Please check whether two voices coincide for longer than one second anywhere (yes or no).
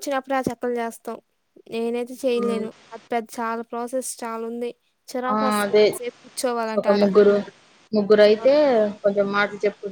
no